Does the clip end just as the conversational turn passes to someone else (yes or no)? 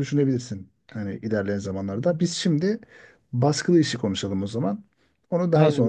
yes